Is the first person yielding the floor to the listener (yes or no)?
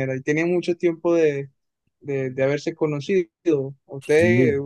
no